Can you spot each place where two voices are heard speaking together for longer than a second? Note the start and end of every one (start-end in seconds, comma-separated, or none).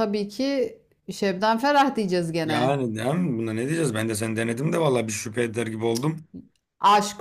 none